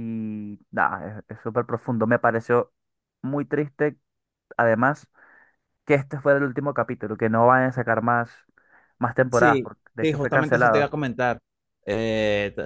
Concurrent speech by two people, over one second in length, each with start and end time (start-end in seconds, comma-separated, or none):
9.3-10.9